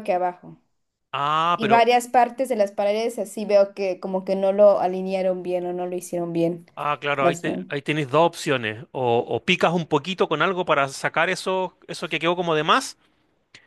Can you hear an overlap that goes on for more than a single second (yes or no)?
no